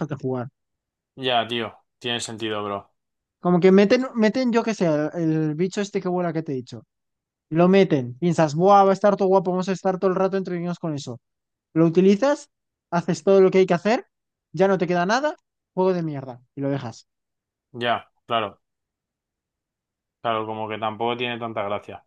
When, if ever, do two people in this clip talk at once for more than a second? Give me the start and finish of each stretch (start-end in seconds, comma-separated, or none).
none